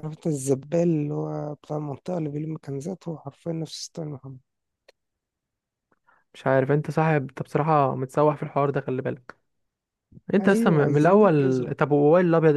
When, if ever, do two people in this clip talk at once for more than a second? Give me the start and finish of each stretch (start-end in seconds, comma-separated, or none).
10.4-11.7